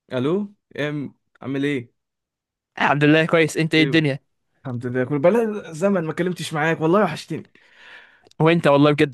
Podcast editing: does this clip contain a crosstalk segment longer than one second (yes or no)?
no